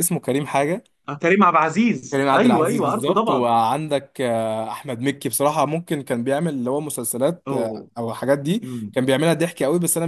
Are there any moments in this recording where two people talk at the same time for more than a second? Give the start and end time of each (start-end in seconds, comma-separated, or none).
2.1-3.5